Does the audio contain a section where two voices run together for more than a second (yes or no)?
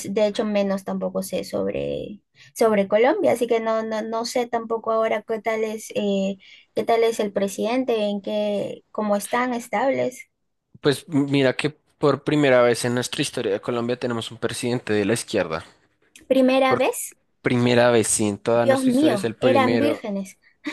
yes